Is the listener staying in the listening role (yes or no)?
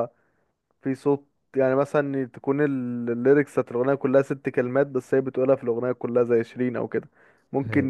yes